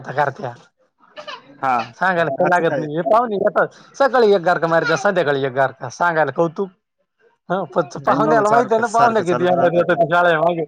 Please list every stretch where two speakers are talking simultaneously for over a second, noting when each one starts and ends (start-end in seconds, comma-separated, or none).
8.1-9.5